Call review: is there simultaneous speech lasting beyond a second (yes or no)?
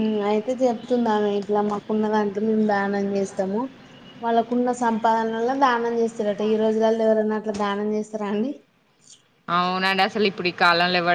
no